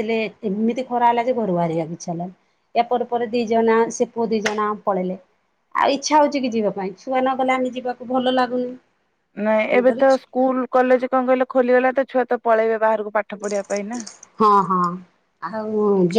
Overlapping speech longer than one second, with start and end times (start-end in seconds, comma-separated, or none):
none